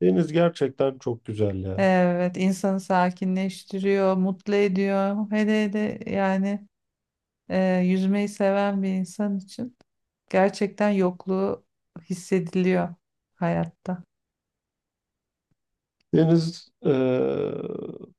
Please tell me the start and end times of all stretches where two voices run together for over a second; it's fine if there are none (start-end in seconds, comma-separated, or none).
none